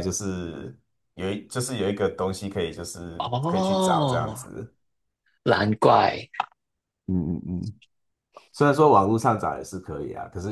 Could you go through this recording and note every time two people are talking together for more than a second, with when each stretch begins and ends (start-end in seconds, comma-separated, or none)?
3.2-4.5